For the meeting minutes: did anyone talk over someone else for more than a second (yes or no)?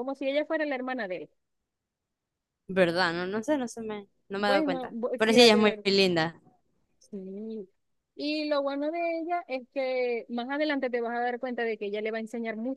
yes